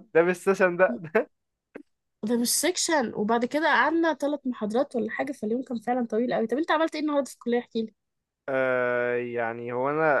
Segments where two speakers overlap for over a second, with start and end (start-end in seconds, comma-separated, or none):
none